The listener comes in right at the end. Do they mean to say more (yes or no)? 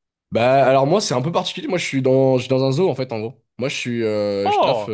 no